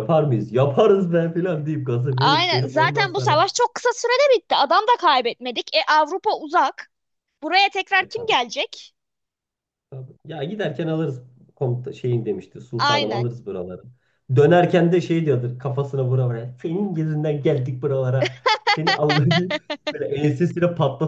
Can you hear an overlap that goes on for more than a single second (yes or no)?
yes